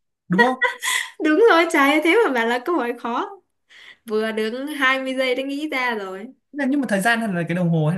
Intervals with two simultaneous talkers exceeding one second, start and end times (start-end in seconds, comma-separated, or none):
none